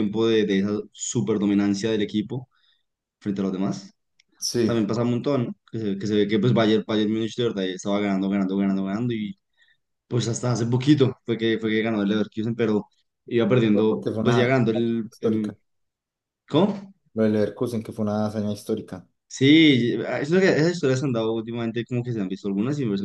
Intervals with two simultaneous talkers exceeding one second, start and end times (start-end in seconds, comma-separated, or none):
13.7-15.5